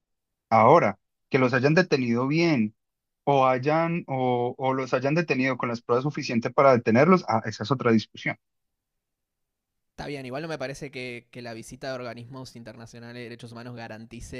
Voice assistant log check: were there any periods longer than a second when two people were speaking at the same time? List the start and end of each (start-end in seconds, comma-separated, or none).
none